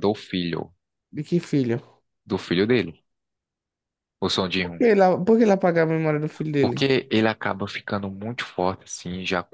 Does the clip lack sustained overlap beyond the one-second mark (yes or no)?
yes